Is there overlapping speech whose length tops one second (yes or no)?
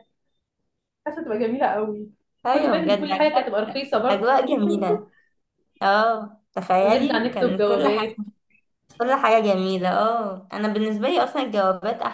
yes